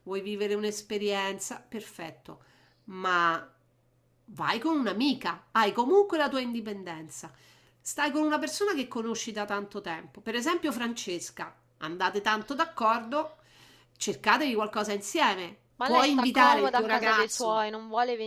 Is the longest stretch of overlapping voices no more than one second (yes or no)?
no